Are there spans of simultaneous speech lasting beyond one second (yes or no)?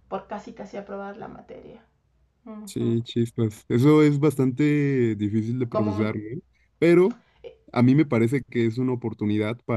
no